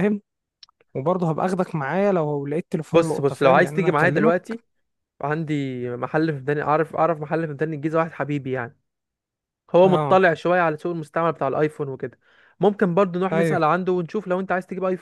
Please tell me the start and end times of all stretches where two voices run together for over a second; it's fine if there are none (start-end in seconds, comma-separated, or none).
2.9-4.4